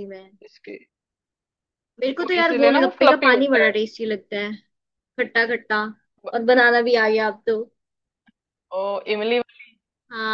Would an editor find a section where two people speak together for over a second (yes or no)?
yes